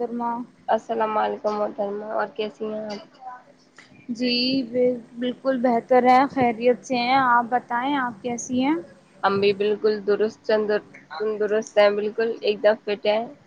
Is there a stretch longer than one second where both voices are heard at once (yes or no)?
no